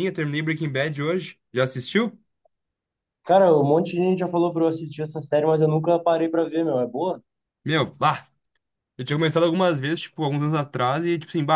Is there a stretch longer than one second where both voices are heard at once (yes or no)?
no